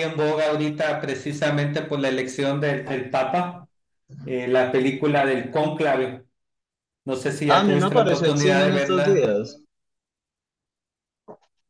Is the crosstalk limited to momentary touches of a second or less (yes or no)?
no